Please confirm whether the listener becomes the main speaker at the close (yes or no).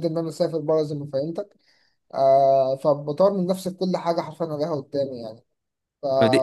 yes